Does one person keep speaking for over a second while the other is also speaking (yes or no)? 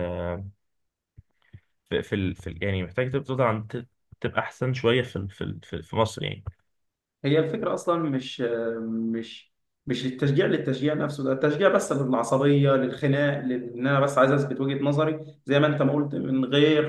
no